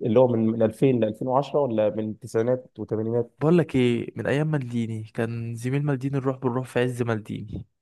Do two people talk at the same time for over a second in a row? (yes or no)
no